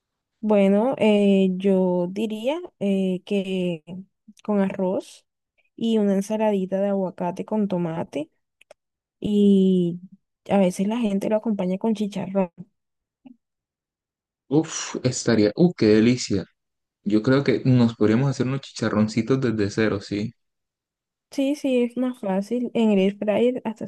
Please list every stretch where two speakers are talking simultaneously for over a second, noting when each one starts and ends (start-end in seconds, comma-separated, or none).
none